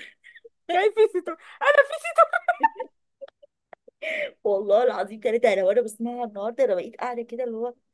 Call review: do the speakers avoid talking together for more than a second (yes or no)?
yes